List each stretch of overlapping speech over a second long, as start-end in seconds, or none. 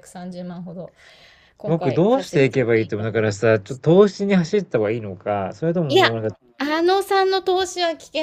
1.6-3.5